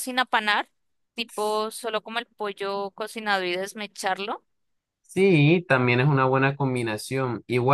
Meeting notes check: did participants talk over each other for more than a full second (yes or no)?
no